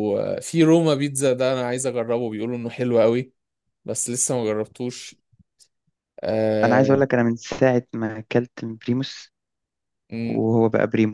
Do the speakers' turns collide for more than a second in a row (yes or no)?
no